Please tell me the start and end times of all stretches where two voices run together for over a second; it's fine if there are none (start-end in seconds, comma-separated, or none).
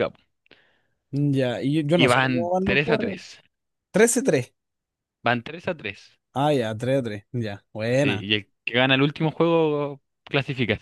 1.9-3.2